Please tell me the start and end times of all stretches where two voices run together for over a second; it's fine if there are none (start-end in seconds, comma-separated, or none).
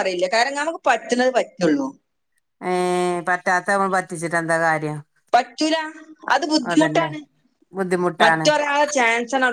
none